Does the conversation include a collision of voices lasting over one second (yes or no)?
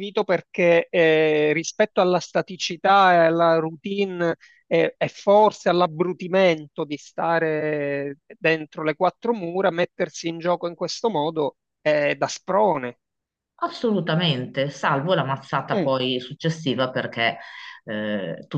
no